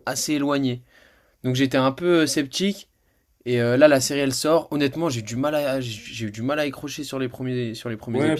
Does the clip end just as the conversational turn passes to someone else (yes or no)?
yes